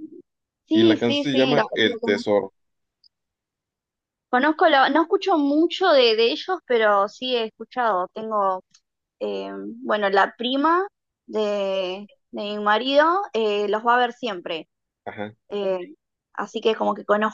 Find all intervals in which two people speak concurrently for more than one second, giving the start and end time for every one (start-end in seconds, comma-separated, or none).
0.7-2.2